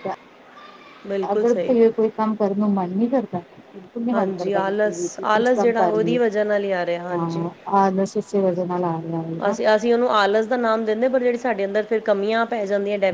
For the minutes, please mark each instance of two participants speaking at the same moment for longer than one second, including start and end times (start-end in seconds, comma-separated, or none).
4.1-6.1